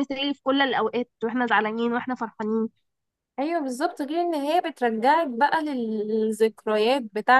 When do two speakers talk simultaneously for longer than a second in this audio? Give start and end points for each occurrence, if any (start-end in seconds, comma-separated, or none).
none